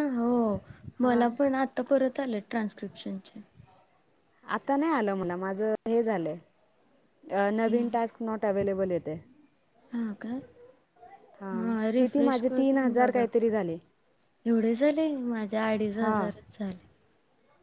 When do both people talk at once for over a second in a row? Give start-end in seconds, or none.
11.5-13.3